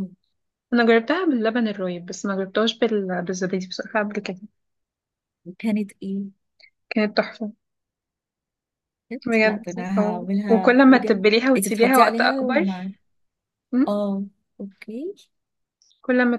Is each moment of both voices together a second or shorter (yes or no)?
no